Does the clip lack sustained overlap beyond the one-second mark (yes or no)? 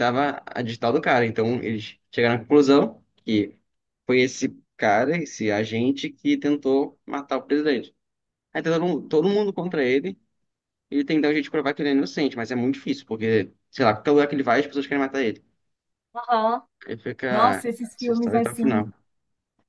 no